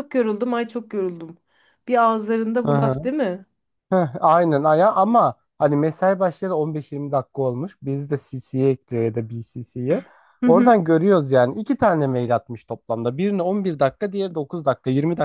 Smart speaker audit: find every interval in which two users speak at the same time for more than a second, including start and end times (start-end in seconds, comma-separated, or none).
none